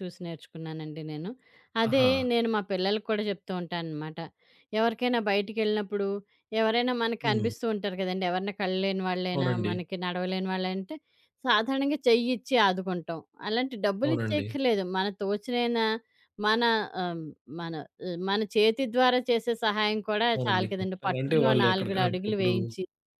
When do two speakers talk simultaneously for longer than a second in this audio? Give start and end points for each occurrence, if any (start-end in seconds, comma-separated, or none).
20.3-22.5